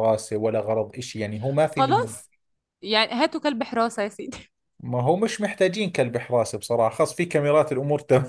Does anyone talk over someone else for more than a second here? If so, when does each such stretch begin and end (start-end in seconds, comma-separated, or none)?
none